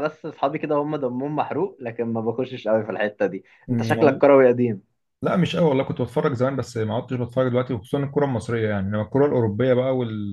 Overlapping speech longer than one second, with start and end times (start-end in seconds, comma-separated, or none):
none